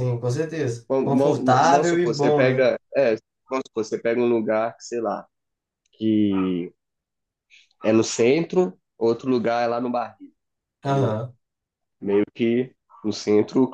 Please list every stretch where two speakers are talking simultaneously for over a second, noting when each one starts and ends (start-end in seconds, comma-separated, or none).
0.9-2.7